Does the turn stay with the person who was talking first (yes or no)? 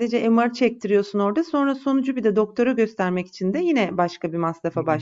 no